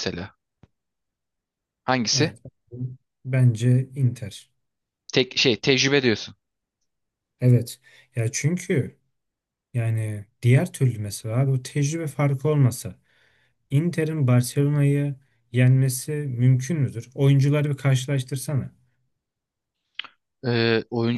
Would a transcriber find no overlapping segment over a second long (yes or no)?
yes